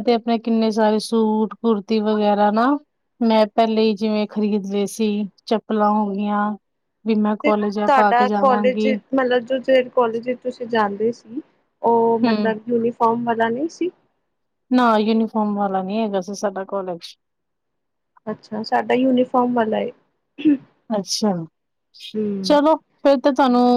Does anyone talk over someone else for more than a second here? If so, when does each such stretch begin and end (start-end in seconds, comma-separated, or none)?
7.4-8.9